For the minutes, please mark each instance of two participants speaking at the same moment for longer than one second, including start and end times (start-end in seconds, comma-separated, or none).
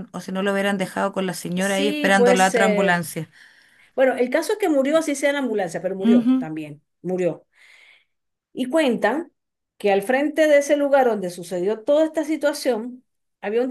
1.6-3.1